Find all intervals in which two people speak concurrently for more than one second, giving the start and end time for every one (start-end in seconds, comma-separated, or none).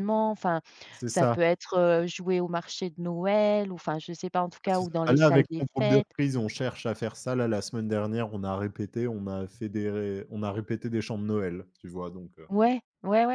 4.6-6.1